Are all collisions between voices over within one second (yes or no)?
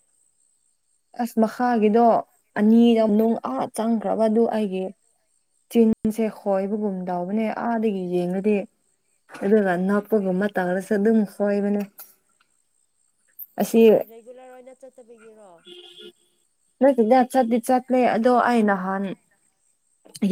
yes